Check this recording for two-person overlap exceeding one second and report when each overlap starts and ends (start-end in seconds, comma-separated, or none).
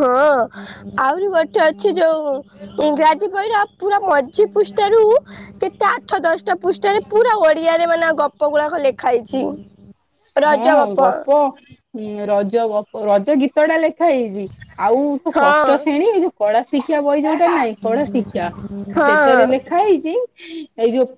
none